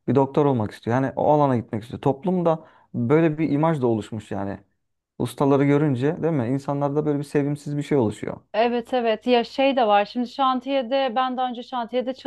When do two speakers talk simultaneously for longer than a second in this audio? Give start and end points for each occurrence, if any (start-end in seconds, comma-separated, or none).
none